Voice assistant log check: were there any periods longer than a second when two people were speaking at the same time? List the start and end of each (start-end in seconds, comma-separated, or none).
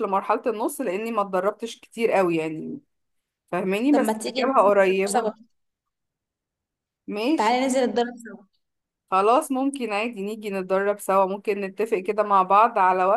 3.9-5.3